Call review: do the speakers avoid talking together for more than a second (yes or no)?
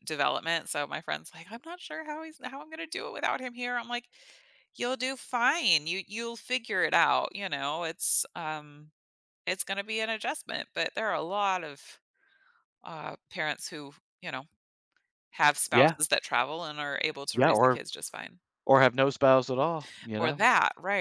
yes